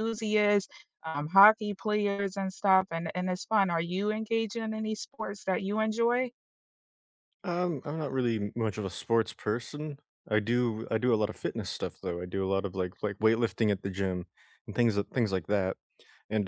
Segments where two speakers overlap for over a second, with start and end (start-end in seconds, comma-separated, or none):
none